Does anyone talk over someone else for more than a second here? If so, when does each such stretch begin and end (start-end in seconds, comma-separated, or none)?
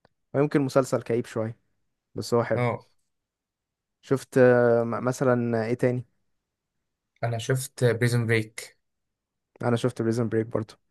none